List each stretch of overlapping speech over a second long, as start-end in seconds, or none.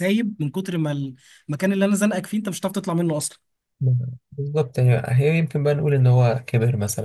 none